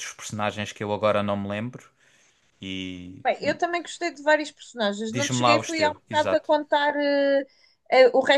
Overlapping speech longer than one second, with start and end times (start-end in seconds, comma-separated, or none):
5.1-6.5